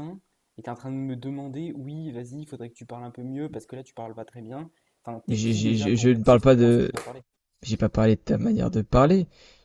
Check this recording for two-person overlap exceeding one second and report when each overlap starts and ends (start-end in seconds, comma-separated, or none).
5.3-6.9